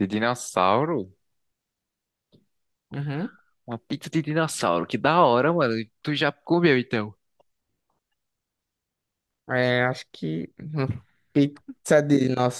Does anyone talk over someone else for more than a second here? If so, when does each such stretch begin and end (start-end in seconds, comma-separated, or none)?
none